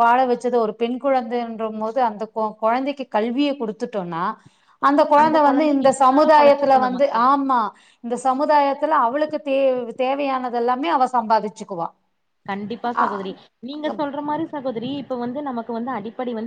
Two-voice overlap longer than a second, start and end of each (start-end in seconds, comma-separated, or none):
5.5-7.1